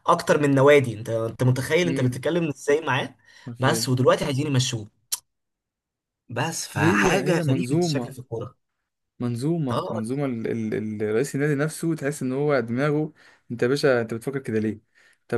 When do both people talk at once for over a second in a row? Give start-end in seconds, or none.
6.7-8.2